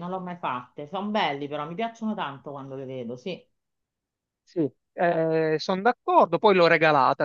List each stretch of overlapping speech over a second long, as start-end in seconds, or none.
none